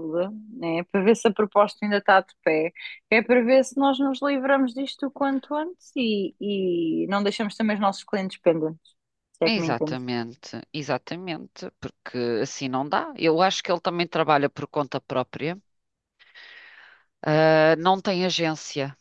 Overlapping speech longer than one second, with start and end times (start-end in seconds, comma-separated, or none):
none